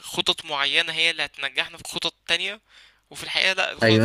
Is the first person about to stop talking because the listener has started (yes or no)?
yes